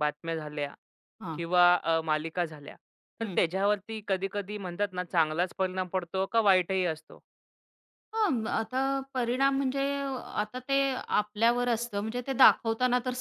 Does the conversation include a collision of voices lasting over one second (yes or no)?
no